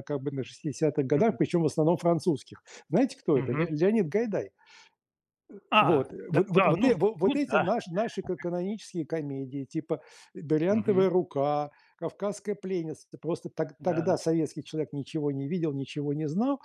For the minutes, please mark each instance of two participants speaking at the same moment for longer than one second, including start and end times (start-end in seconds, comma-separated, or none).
5.8-7.7